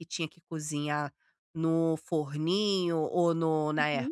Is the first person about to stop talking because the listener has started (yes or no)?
no